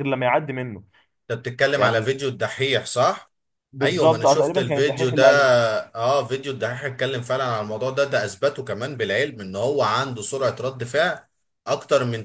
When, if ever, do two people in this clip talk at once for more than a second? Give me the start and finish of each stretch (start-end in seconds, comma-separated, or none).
3.8-5.2